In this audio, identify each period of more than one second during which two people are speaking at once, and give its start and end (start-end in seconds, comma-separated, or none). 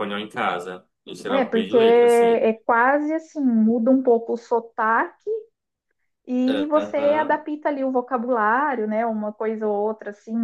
1.3-2.5